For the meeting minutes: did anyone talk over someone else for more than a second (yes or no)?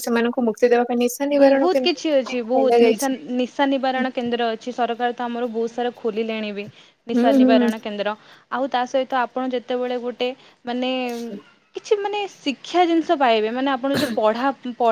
yes